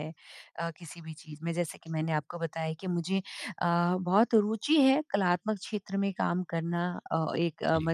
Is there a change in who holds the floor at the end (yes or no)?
no